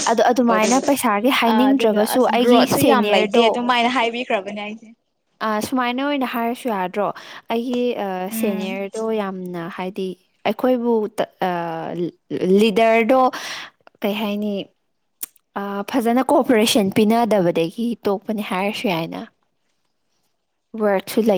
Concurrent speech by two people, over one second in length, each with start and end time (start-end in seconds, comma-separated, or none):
1.5-3.5